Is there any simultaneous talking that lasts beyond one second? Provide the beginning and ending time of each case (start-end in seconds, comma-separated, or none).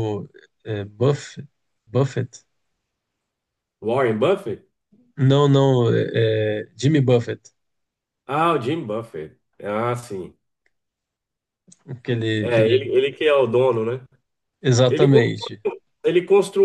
none